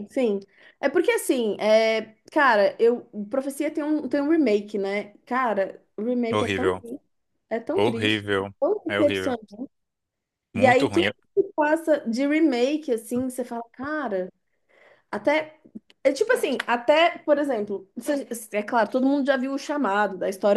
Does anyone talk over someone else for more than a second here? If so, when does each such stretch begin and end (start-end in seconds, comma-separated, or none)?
7.7-9.4